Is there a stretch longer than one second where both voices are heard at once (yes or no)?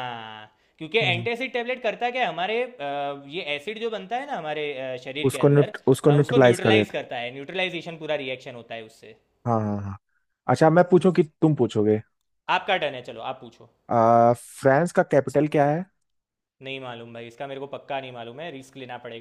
yes